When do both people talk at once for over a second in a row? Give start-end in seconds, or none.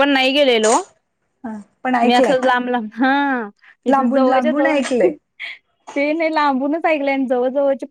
3.9-5.1